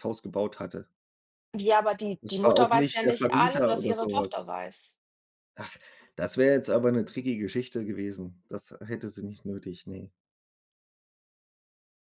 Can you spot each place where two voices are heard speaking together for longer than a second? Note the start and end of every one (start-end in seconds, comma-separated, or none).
2.2-4.5